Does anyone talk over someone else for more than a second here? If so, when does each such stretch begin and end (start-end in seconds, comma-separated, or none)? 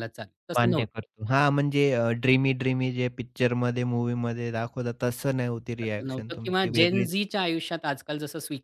5.8-7.1